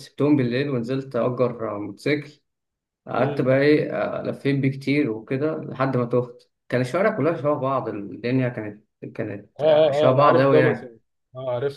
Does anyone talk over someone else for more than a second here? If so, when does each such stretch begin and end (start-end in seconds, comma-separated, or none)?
9.6-11.0